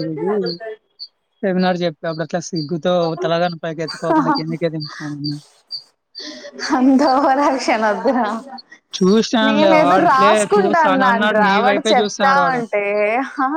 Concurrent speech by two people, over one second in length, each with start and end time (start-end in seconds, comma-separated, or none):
9.5-12.6